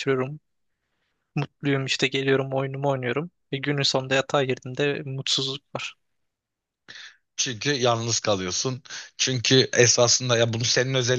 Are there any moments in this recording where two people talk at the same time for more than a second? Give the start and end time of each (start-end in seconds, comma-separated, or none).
none